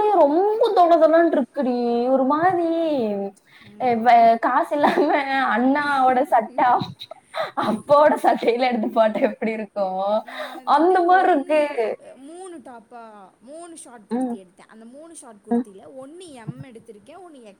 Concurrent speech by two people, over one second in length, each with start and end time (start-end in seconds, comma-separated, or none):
none